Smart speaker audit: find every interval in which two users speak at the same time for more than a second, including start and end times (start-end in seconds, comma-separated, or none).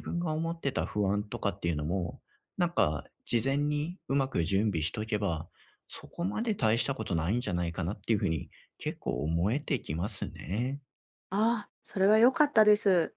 none